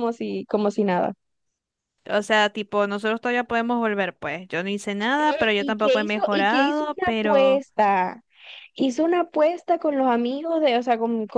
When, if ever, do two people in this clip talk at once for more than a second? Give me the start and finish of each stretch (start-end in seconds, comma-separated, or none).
5.2-7.6